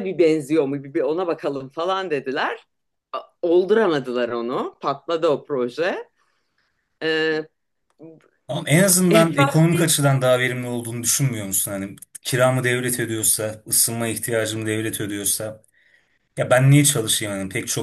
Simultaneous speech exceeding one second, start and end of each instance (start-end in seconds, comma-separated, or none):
none